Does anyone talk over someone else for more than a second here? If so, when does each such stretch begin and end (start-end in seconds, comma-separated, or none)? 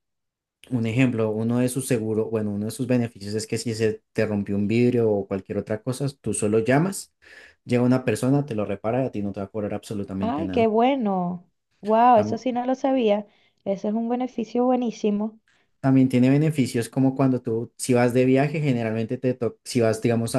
none